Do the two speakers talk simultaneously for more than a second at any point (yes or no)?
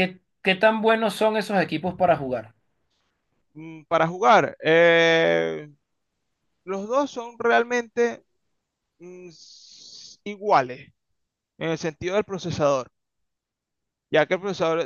no